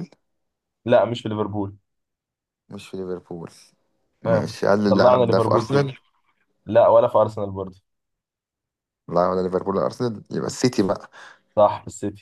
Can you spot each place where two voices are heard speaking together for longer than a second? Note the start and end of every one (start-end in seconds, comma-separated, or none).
4.2-5.8